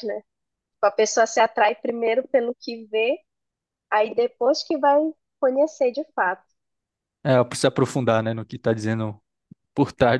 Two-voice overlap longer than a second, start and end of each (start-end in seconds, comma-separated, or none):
none